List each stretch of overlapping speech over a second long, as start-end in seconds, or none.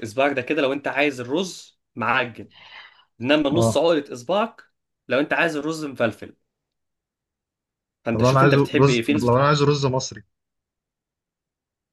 8.1-9.5